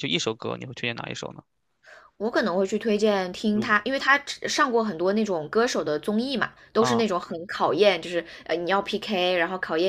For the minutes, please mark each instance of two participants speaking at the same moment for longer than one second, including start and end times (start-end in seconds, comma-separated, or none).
none